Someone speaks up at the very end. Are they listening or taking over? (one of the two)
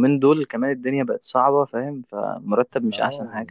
taking over